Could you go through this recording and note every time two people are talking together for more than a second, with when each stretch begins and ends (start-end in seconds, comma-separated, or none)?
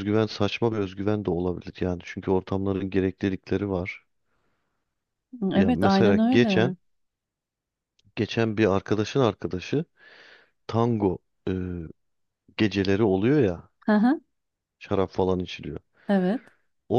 5.5-6.7